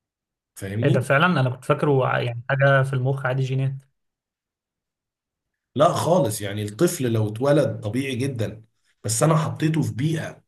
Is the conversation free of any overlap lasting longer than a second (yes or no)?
yes